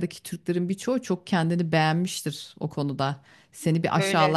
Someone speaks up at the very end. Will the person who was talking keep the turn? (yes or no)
yes